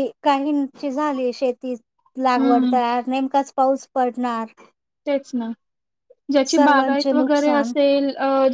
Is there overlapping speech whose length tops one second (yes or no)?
yes